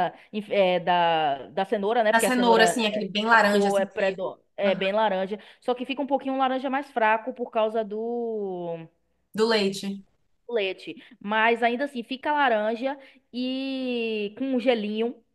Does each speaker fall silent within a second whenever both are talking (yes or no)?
no